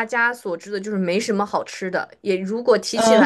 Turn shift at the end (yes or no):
no